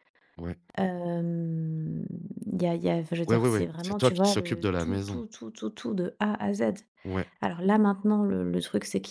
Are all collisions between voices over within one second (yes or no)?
no